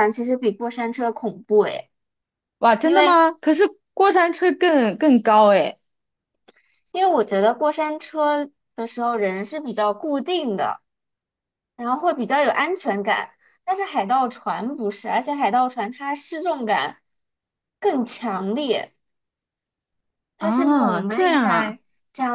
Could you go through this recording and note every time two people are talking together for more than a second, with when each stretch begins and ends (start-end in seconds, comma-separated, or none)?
20.4-21.8